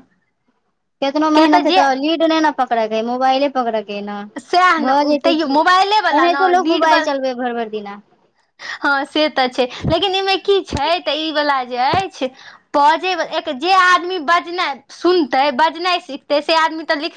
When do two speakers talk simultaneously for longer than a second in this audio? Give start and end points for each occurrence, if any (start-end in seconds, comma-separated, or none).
4.9-7.0